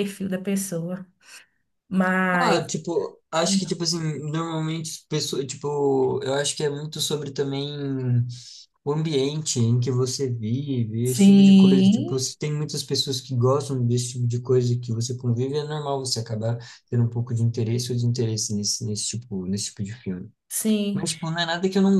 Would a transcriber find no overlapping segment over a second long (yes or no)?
no